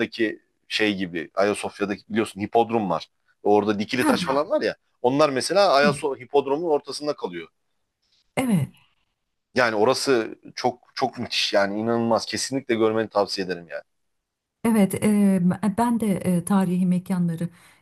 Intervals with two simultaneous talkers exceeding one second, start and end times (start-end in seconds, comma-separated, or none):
none